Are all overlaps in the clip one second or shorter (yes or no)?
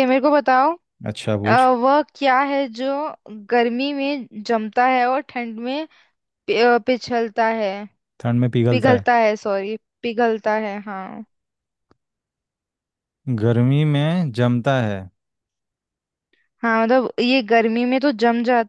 yes